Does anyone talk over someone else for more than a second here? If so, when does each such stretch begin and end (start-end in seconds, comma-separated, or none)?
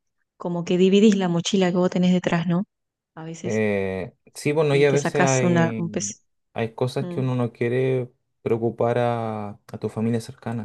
4.7-6.1